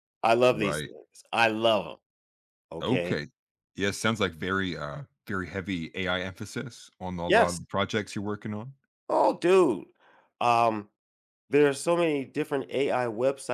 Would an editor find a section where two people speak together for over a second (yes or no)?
no